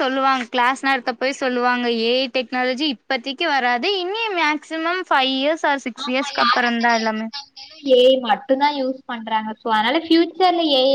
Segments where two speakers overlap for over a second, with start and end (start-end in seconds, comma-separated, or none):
none